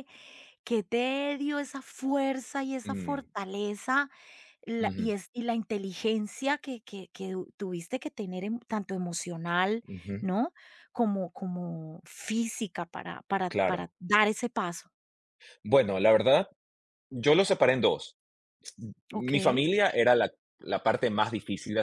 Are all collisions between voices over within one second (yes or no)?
yes